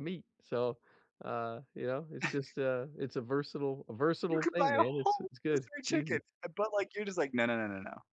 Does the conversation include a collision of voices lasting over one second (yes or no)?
yes